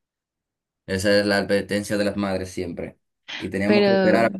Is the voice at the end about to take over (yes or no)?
no